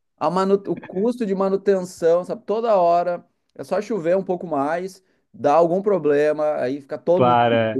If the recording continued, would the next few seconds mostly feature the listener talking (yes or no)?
no